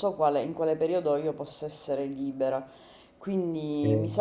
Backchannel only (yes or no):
yes